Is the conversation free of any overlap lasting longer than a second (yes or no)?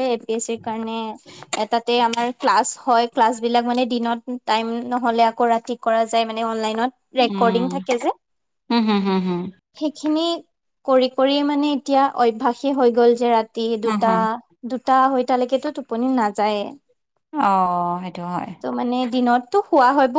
yes